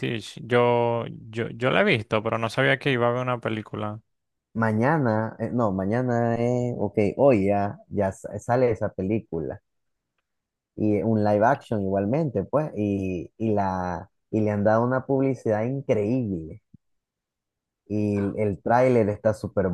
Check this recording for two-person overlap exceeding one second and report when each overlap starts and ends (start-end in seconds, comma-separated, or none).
none